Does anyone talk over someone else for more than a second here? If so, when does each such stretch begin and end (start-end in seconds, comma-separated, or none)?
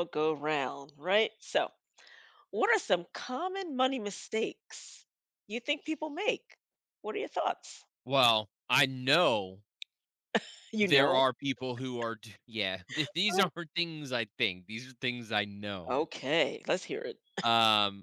none